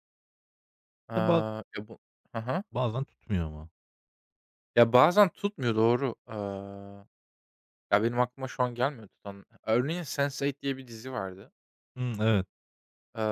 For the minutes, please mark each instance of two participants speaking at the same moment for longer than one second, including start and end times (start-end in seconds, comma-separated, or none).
none